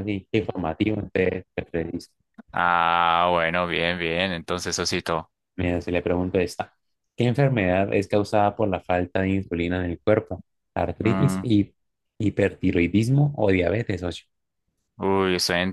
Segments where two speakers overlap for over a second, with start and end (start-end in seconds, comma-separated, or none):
none